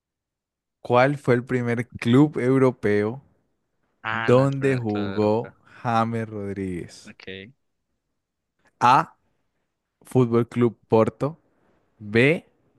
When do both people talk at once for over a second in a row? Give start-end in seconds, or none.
4.1-5.5